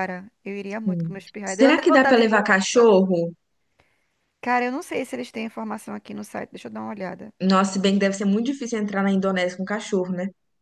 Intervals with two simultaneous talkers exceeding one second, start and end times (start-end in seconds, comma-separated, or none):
0.8-2.3